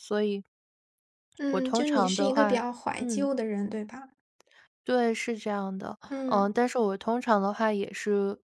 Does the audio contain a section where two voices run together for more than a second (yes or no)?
yes